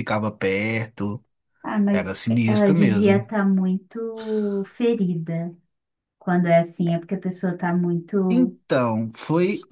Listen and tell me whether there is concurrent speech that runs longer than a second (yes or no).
yes